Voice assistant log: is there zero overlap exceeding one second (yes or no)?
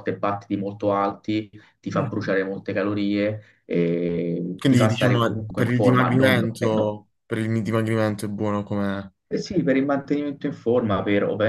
no